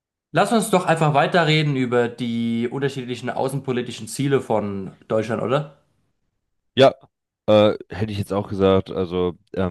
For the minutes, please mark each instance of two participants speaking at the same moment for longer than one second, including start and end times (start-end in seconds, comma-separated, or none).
none